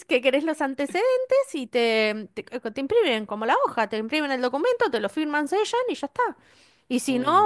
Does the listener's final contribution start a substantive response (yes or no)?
no